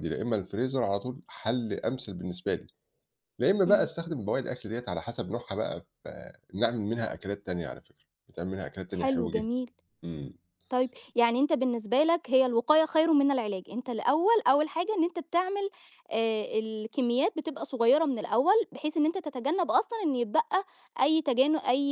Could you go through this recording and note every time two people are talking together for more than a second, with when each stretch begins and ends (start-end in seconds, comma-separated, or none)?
none